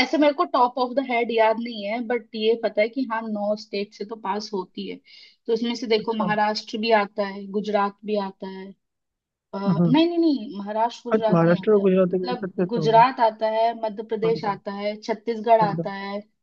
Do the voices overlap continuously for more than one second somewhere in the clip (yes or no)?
yes